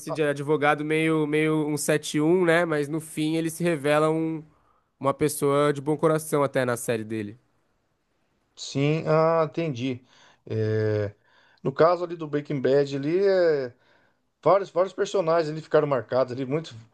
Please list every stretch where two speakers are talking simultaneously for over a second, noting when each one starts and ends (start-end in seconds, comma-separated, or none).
none